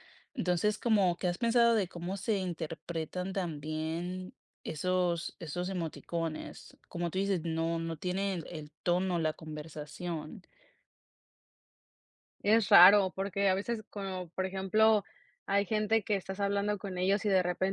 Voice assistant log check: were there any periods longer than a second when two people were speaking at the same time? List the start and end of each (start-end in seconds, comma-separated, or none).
none